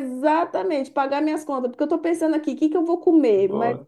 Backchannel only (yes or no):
yes